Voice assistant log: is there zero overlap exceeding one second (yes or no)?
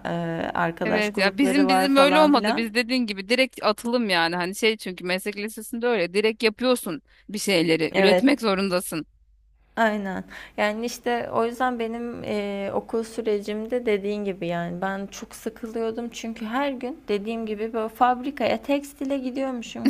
no